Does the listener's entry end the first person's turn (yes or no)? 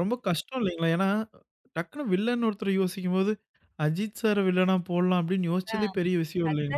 yes